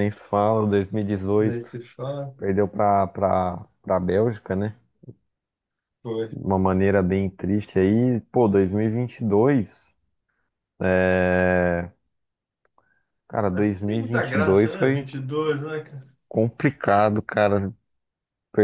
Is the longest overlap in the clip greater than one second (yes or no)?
yes